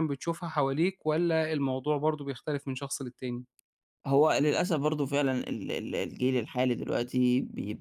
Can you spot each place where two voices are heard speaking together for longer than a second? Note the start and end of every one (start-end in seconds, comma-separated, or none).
none